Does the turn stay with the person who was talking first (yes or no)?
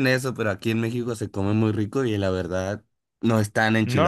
no